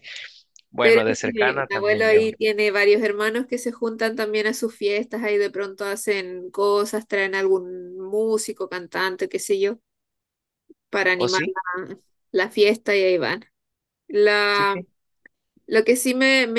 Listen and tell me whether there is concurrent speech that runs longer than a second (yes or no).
yes